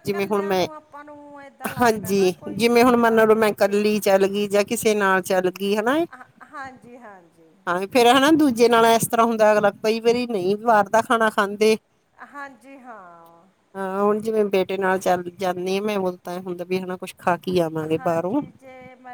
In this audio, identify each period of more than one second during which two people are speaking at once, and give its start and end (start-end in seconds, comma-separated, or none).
1.8-4.0